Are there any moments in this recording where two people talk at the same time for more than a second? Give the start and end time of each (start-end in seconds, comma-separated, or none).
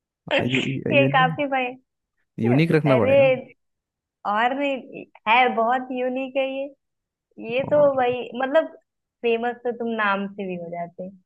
none